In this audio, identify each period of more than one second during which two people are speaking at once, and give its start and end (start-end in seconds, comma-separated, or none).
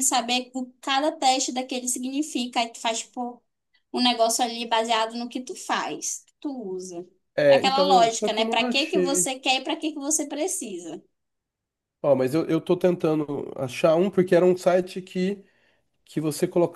7.5-9.3